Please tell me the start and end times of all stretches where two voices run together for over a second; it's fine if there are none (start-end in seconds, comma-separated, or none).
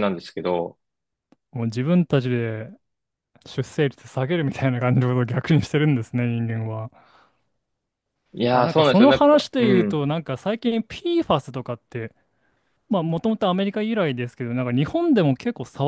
8.5-10.1